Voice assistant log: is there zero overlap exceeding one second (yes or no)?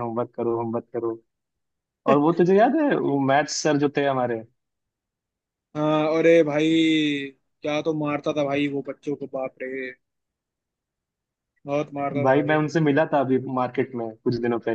yes